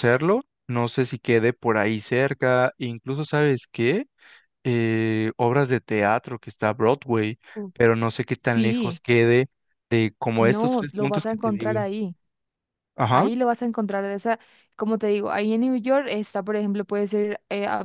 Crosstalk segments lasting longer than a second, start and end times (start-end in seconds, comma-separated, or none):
10.4-11.8